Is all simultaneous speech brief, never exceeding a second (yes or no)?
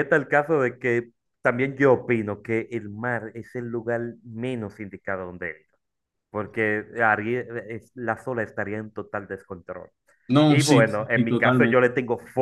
no